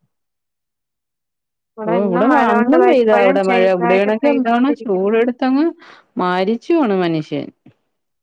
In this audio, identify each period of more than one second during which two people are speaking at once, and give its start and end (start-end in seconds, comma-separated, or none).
1.9-5.1